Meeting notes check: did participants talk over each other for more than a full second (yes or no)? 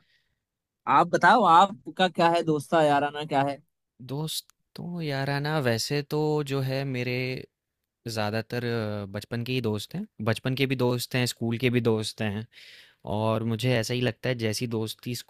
no